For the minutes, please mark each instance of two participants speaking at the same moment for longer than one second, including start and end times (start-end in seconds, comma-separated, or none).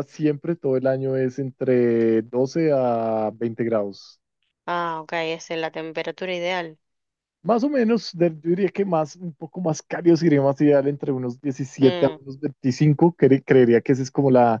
none